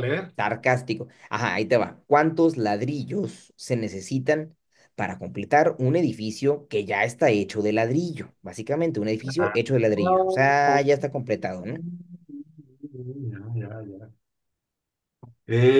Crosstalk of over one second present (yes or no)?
no